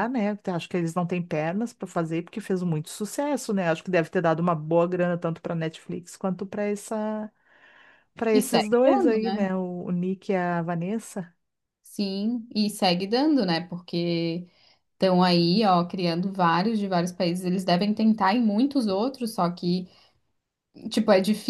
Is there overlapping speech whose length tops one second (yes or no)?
yes